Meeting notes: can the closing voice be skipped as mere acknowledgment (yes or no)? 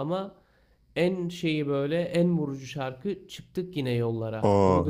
no